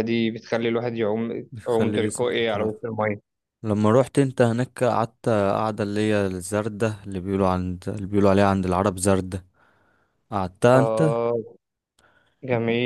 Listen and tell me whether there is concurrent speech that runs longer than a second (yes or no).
yes